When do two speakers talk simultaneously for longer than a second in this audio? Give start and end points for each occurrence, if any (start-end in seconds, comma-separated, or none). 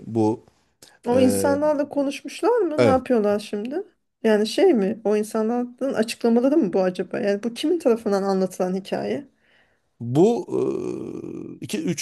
none